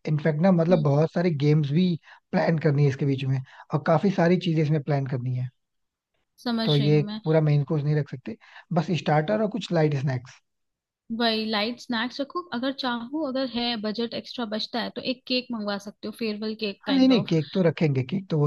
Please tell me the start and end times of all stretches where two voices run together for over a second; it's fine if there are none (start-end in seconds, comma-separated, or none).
none